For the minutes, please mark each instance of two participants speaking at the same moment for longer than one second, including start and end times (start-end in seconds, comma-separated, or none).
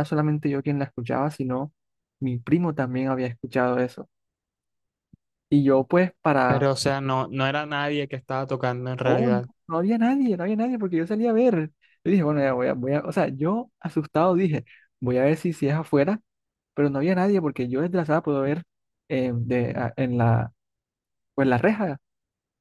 none